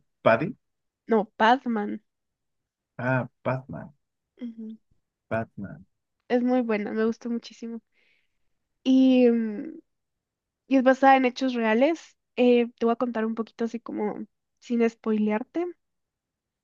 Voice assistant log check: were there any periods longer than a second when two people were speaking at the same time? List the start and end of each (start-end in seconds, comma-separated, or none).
none